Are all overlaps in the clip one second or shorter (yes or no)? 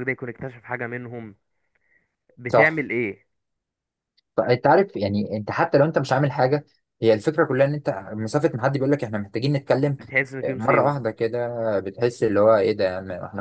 yes